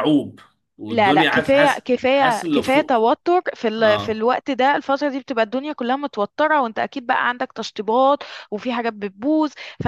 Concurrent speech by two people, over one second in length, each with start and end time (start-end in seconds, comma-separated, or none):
0.9-3.0